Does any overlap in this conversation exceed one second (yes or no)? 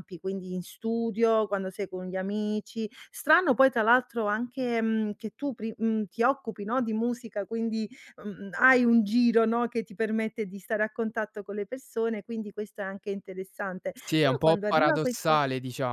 yes